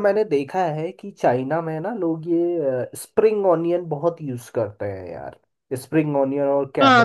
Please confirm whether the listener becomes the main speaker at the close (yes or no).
yes